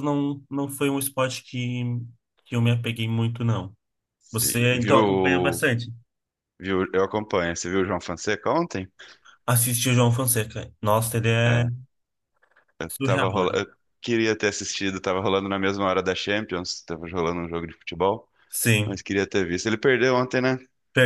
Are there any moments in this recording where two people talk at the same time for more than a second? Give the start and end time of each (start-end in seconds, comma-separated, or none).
4.3-5.6